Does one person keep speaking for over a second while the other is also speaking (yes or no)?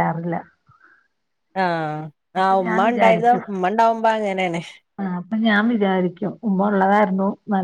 no